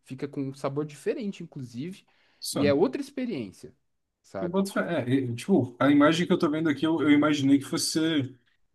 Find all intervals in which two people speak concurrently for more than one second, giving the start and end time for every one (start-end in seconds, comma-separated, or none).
none